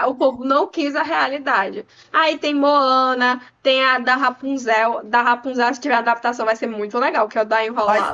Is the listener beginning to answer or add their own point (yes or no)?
yes